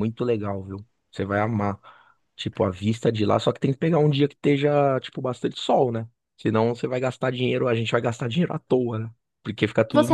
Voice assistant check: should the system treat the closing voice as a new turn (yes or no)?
yes